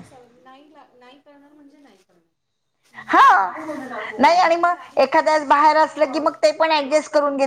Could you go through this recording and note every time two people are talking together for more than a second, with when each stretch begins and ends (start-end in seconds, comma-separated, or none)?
4.2-6.4